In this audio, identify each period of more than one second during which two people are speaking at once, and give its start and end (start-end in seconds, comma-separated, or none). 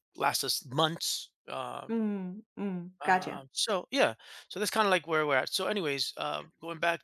none